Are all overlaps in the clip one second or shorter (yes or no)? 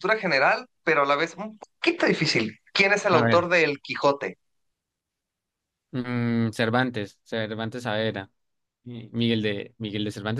yes